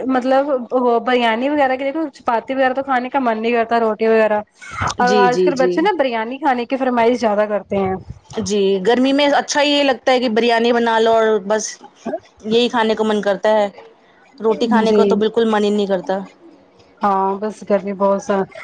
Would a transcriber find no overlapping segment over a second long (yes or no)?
yes